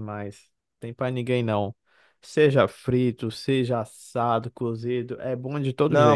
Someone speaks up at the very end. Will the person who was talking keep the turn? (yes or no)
no